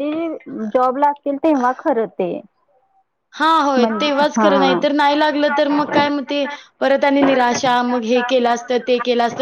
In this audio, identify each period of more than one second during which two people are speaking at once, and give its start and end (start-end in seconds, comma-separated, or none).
none